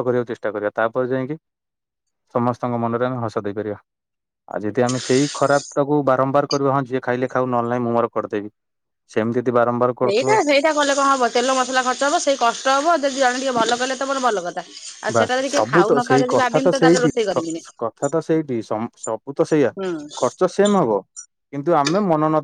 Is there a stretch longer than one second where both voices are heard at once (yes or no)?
yes